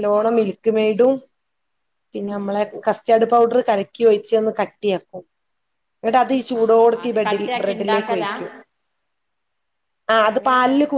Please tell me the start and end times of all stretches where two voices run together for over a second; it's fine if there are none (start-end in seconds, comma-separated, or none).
6.6-8.3